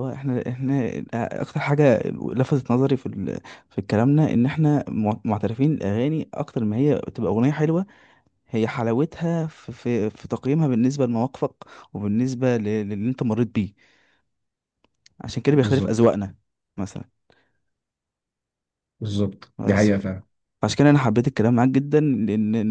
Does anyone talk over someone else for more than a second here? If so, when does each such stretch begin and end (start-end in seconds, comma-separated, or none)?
none